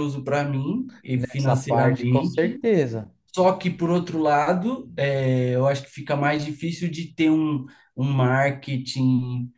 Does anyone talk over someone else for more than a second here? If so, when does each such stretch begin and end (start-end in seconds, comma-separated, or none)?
1.1-2.6